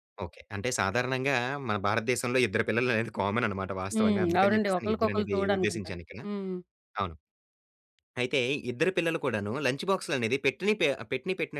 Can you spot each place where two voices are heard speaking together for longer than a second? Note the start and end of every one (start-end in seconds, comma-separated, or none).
3.9-6.2